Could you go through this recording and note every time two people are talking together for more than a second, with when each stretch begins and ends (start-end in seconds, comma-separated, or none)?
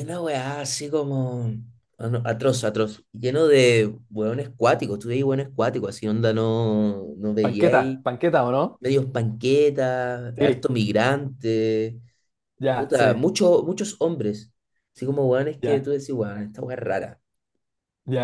none